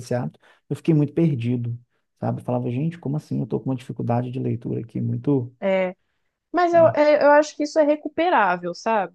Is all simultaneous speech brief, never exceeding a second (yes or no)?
yes